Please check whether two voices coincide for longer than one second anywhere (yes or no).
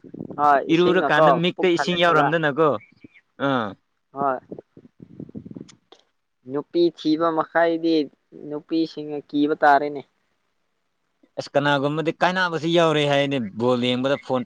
yes